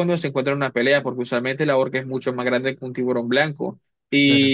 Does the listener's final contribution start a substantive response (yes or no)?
no